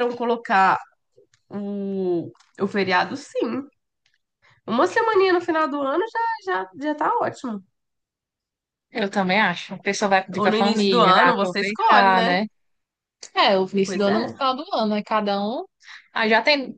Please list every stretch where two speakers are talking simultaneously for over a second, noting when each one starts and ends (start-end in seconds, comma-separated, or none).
10.3-12.3